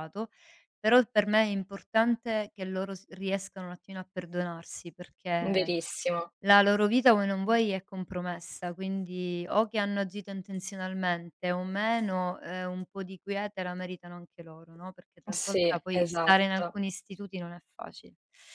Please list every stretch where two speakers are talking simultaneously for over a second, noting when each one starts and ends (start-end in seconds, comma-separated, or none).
15.3-16.8